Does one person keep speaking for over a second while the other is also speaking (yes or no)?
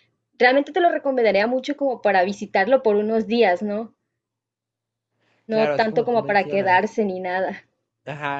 yes